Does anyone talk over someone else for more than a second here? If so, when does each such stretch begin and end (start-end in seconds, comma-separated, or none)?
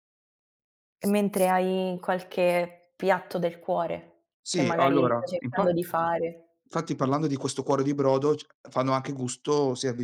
4.4-5.7